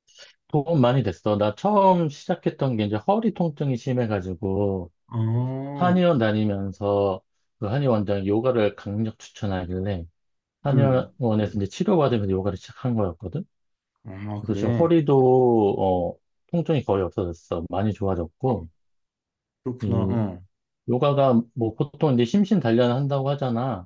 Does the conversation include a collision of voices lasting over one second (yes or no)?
no